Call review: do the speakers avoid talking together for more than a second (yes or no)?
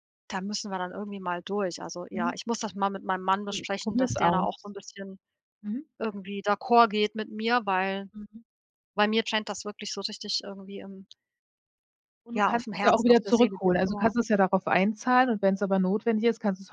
no